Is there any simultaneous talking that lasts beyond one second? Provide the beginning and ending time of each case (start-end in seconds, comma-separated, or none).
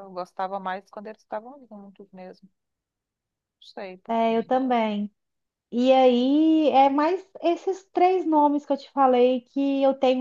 none